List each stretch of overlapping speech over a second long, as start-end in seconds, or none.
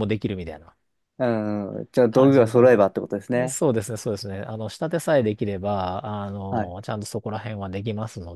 2.1-3.6